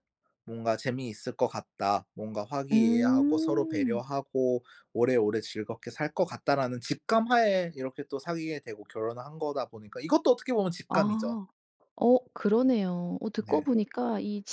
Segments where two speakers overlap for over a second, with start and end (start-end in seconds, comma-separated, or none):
2.7-4.0